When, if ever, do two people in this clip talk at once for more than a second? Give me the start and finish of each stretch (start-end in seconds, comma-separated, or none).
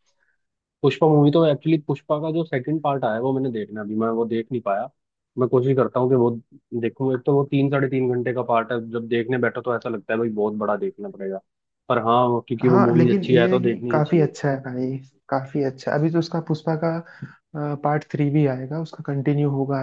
12.6-14.3